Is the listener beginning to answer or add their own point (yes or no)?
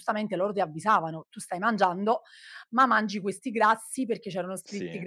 no